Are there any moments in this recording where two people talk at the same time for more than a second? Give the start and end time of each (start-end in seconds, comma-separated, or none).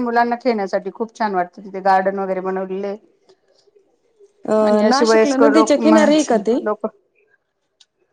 4.7-6.0